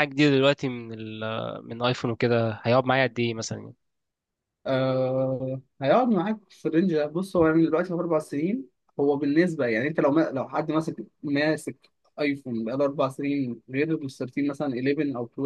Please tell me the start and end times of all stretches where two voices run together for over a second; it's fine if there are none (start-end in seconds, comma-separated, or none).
none